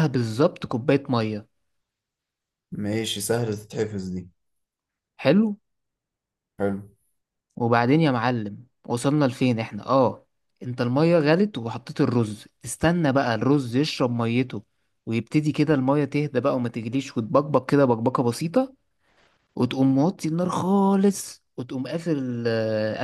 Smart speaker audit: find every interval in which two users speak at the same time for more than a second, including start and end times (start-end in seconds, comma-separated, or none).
none